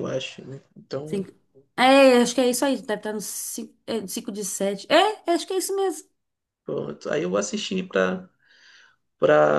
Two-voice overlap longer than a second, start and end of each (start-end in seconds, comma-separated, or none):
none